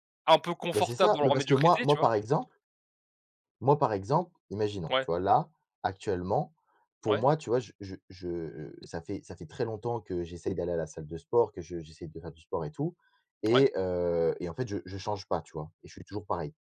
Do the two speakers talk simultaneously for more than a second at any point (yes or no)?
yes